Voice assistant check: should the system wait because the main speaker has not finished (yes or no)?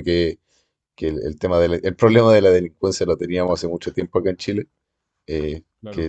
yes